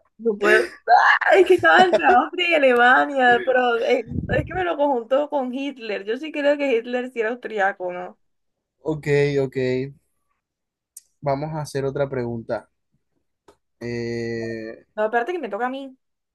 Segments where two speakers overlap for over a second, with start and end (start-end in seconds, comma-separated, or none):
none